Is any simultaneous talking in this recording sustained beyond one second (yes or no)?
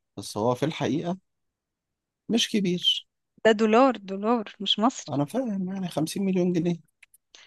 no